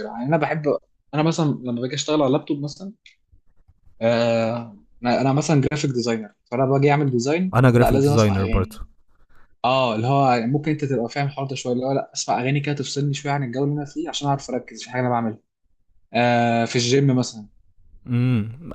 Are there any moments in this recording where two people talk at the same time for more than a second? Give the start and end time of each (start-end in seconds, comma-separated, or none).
7.5-8.8